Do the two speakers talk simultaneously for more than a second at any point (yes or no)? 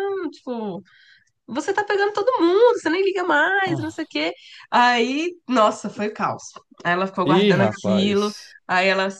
yes